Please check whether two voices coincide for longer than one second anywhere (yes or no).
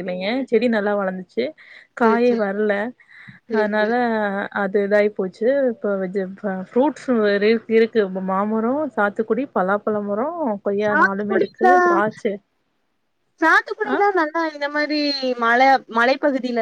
no